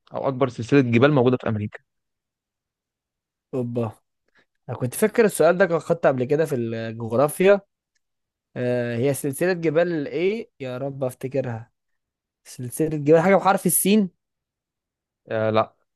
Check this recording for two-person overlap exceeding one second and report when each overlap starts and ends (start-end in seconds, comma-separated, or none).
none